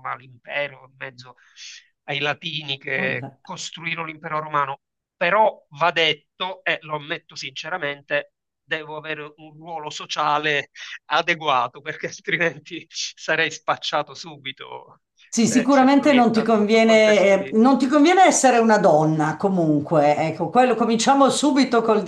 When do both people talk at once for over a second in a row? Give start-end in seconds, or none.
15.3-17.5